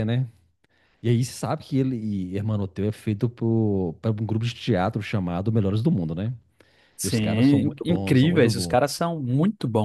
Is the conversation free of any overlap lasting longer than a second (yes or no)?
no